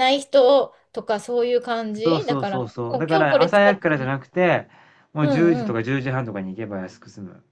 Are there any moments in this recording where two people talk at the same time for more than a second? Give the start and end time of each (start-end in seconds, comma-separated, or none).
2.0-4.1